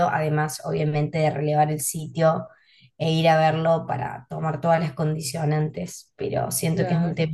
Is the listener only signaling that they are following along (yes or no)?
yes